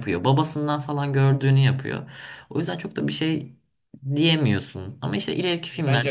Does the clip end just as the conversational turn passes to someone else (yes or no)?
yes